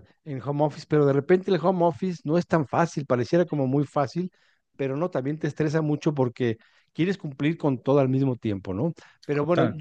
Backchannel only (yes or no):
yes